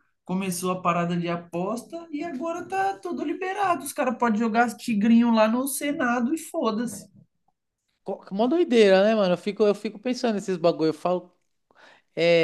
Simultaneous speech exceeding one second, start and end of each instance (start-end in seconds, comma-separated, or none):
none